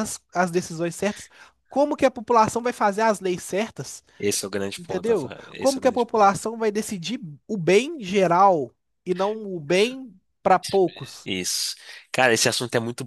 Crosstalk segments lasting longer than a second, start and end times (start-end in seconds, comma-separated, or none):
4.8-6.4